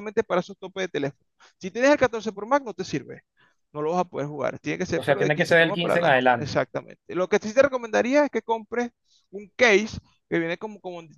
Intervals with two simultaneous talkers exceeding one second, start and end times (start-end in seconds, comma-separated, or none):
5.0-6.6